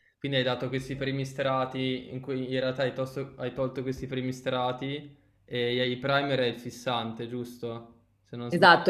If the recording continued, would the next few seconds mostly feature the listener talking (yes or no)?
yes